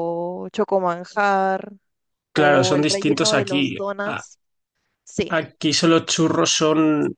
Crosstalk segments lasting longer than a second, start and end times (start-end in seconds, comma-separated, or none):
2.3-4.2